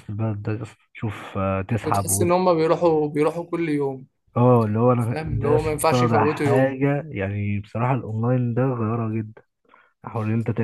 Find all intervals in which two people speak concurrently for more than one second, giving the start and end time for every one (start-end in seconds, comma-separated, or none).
5.0-6.8